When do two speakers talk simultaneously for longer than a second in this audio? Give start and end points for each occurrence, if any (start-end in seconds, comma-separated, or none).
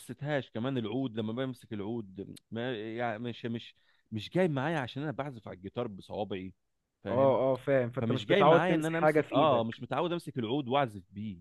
8.0-9.7